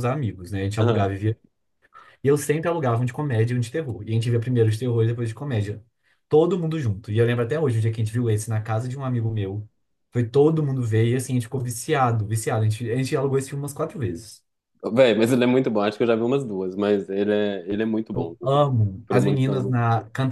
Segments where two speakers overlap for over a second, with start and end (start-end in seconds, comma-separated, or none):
18.1-19.7